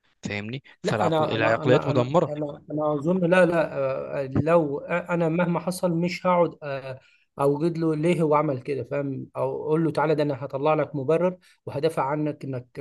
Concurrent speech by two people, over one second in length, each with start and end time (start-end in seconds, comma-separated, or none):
0.8-2.3